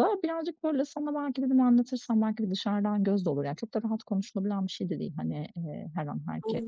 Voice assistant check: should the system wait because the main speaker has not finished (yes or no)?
yes